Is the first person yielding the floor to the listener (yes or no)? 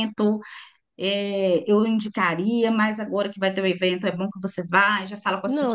no